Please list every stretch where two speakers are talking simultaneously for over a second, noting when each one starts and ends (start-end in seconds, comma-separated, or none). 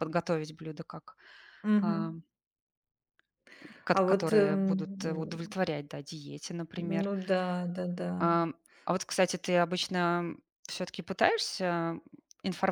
3.9-5.6